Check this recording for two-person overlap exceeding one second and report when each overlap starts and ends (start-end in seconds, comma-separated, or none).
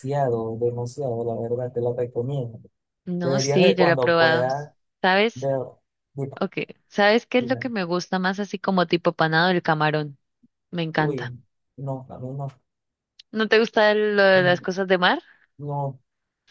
3.2-4.5